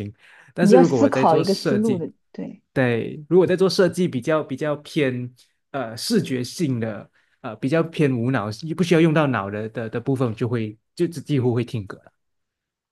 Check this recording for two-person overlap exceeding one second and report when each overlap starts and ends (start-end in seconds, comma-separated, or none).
0.6-2.0